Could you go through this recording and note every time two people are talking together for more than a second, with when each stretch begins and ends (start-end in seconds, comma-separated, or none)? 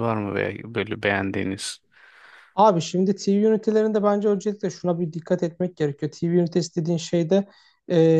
none